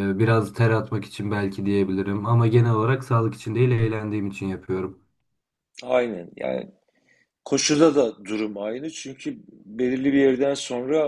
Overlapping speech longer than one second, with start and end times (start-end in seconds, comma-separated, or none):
none